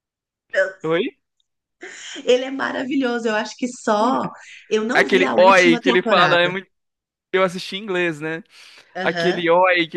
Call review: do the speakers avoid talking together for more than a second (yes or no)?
no